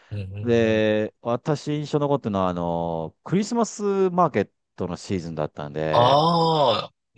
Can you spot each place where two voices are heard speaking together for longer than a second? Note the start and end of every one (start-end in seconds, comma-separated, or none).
none